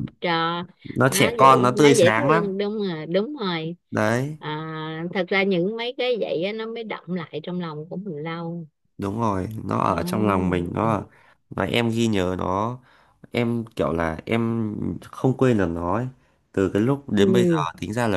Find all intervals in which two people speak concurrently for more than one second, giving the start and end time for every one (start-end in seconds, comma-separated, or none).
1.1-2.5